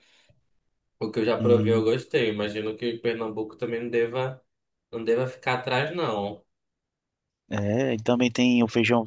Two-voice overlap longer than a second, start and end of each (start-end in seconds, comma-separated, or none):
none